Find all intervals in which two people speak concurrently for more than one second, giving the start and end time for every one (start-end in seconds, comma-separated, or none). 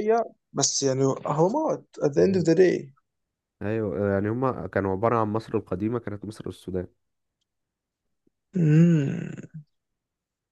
none